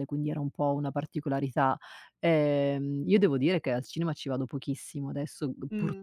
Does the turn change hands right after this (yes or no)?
no